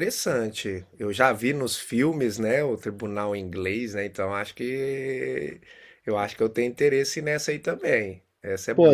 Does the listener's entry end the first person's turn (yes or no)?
yes